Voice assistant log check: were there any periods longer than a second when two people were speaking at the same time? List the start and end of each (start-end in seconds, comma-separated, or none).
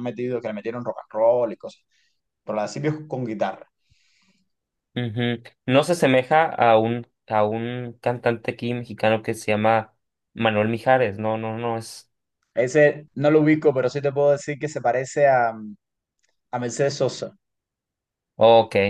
none